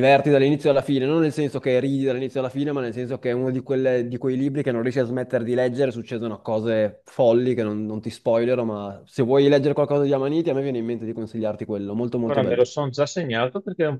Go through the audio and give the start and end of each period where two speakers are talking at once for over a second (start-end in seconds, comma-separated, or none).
none